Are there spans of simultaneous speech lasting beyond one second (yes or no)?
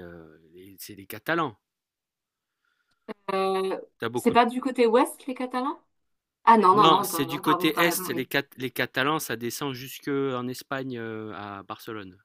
yes